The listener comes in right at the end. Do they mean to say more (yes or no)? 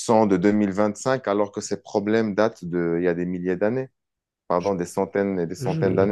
yes